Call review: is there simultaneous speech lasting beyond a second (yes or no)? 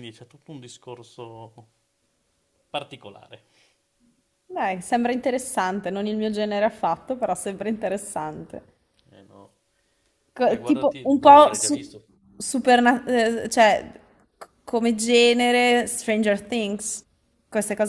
yes